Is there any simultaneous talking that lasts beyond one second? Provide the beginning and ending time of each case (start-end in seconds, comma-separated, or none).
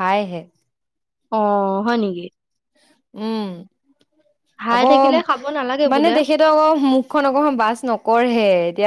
none